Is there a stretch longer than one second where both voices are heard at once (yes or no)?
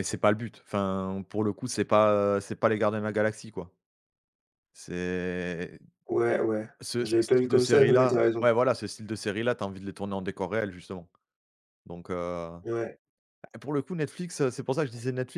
yes